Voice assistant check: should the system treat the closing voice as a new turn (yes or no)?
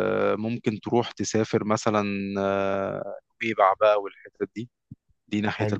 no